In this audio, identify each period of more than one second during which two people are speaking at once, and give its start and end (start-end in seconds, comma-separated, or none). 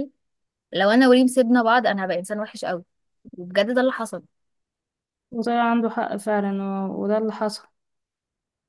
none